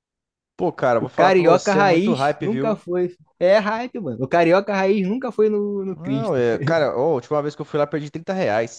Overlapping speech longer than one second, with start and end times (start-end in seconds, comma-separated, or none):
1.0-2.8